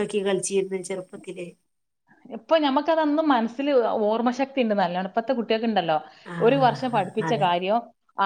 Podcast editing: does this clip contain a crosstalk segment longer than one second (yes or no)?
no